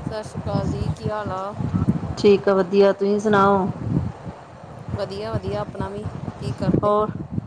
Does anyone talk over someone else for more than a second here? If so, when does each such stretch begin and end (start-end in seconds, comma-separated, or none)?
none